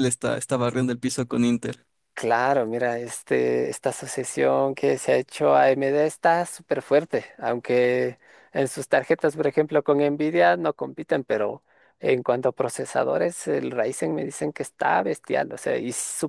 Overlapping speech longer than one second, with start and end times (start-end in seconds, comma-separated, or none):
none